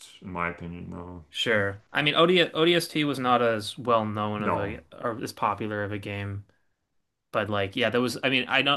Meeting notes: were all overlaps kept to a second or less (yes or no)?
yes